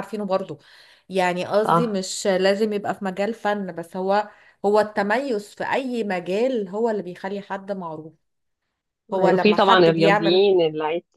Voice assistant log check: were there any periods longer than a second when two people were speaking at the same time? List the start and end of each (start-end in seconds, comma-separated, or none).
9.1-10.4